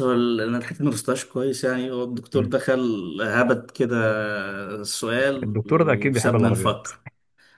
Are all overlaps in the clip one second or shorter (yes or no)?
no